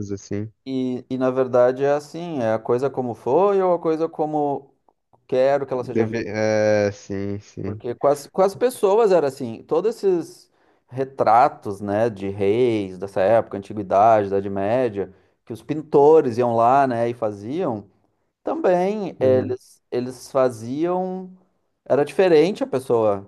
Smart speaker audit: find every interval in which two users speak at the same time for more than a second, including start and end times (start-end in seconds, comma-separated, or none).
none